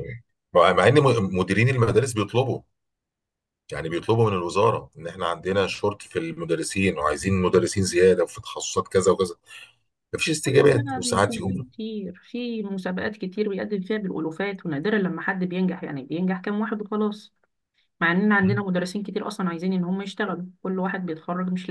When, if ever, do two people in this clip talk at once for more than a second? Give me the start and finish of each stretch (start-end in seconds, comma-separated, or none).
10.4-11.7